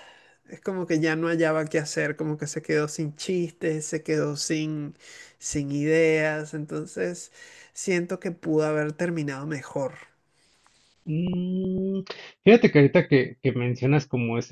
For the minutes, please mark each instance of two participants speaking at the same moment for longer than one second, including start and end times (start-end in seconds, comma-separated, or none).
none